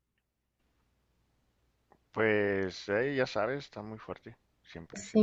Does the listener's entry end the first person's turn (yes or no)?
yes